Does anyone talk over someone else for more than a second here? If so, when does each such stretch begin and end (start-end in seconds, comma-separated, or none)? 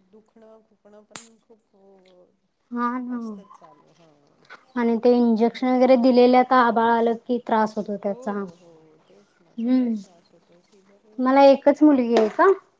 5.1-6.4